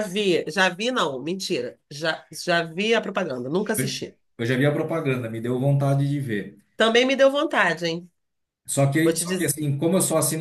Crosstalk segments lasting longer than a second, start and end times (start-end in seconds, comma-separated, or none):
none